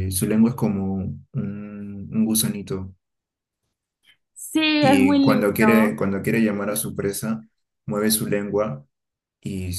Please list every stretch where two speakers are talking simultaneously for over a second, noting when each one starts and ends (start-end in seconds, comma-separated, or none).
4.8-6.0